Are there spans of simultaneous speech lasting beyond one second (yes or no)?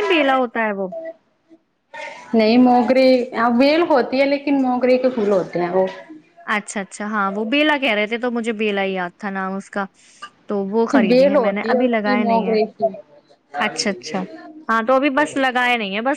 yes